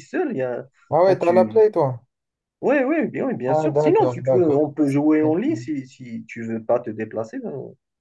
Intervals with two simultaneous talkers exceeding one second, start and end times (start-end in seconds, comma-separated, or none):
3.5-4.7